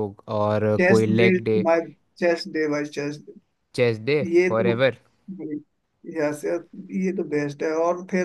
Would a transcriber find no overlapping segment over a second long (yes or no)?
yes